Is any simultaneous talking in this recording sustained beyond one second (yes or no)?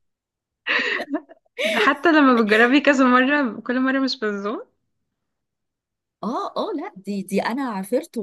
no